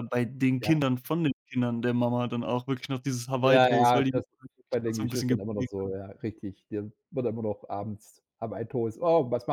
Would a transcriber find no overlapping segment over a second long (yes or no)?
no